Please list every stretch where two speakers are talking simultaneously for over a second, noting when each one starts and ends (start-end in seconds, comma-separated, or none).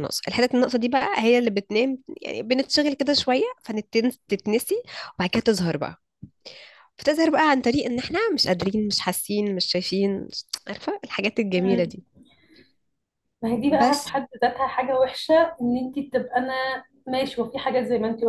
none